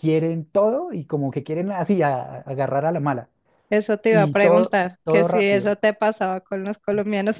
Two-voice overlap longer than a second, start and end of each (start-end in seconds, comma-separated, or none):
4.1-5.7